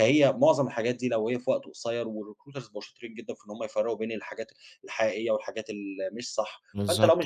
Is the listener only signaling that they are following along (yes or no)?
yes